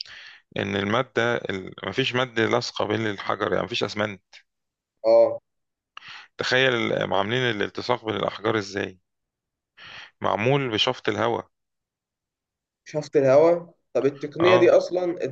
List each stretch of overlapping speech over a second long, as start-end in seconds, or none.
none